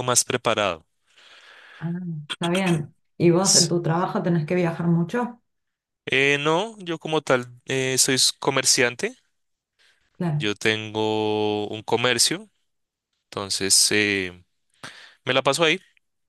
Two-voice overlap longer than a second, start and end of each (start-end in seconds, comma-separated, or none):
none